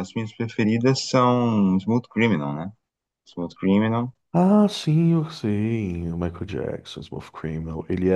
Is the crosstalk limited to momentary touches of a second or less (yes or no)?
yes